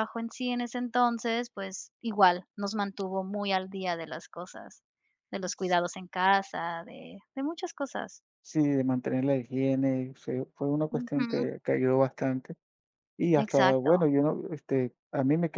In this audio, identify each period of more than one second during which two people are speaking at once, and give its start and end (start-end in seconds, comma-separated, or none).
none